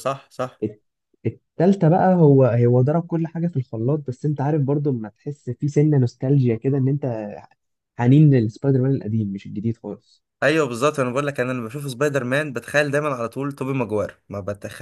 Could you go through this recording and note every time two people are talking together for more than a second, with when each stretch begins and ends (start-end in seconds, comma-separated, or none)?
none